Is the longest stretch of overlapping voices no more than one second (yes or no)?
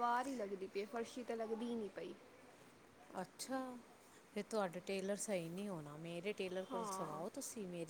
yes